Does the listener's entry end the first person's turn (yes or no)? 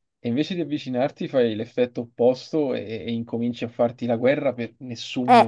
yes